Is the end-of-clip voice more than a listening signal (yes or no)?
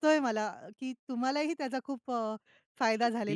yes